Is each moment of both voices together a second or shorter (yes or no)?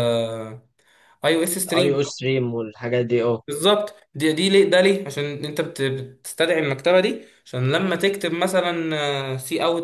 yes